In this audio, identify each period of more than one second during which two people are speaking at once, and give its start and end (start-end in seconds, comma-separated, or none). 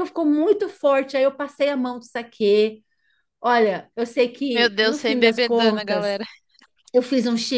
4.5-6.2